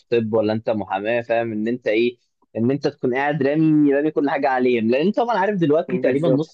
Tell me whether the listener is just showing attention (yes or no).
yes